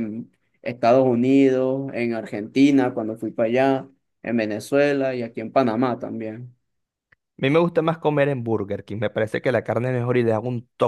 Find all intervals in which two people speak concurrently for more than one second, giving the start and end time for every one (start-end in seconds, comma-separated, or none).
none